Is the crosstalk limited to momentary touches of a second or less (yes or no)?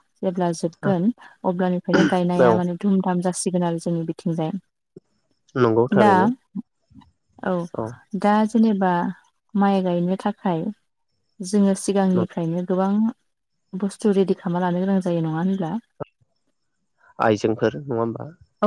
yes